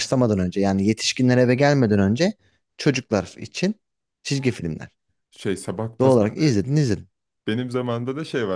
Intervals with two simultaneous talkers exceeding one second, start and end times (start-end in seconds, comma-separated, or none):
none